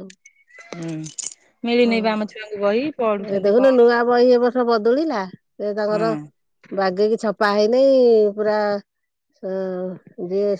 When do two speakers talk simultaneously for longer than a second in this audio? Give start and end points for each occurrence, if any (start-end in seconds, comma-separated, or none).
1.9-3.9